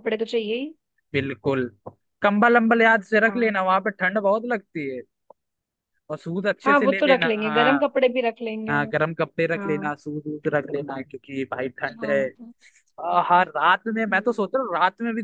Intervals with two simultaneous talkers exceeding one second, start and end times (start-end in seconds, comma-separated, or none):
6.6-7.9